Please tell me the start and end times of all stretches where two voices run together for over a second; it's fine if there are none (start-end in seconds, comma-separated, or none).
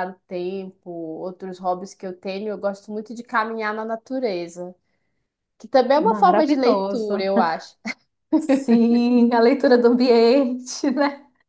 6.0-7.2